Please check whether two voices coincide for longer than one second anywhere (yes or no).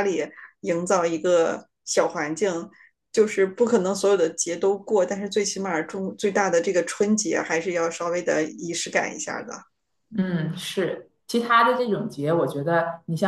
no